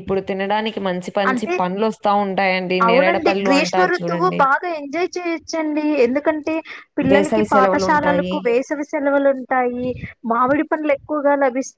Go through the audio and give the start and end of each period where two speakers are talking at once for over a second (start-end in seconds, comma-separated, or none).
7.1-8.3